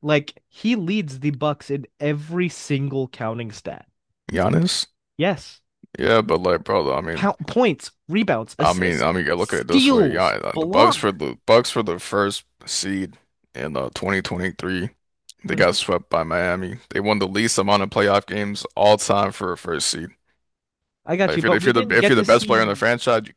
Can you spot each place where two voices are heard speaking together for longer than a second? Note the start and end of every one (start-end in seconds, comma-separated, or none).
8.6-11.0, 21.2-22.9